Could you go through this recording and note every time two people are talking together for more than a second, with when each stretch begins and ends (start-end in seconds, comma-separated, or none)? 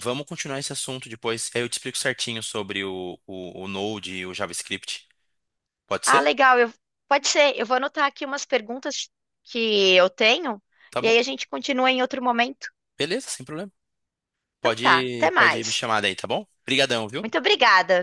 14.6-15.8